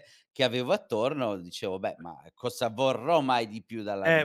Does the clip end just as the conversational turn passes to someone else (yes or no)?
yes